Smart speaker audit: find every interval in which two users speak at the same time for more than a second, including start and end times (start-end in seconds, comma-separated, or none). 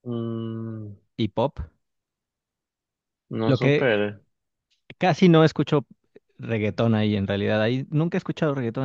none